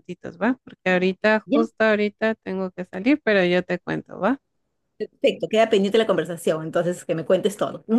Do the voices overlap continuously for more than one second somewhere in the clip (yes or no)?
no